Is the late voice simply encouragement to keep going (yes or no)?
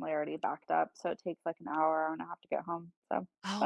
no